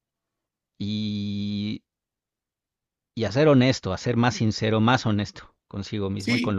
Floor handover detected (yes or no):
yes